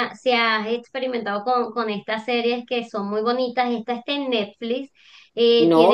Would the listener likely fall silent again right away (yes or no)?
no